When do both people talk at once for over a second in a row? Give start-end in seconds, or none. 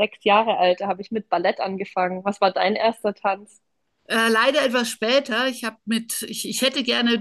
none